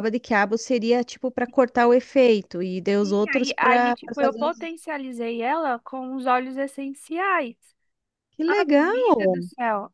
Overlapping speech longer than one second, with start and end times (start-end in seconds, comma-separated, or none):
3.0-4.7